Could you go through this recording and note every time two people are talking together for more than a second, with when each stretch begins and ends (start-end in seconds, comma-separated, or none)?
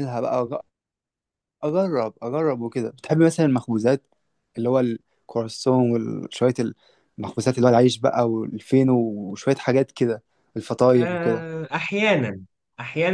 none